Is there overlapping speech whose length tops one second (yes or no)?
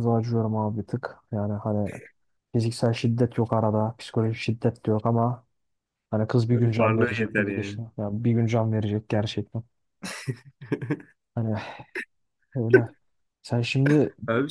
yes